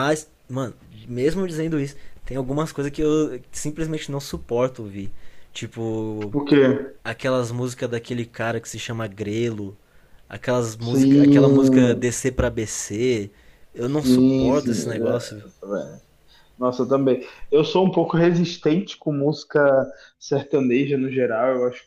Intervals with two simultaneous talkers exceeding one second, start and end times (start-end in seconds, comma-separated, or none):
10.8-12.1, 13.8-15.4